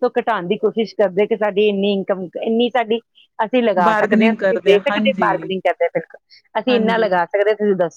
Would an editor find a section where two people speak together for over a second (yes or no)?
yes